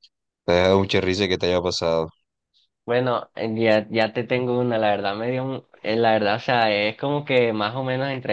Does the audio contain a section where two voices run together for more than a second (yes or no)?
no